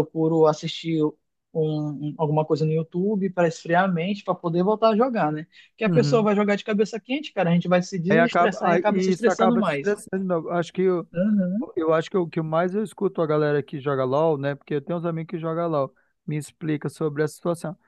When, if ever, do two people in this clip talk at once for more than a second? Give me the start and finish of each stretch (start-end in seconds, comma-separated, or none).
8.1-10.0